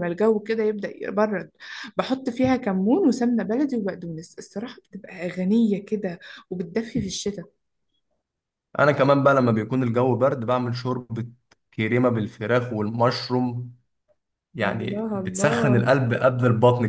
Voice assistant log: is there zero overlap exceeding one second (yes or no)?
no